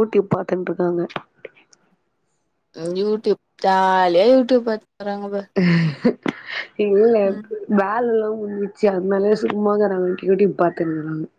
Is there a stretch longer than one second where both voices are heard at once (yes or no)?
no